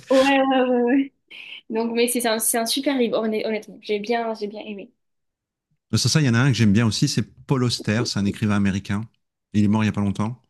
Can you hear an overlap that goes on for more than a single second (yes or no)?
no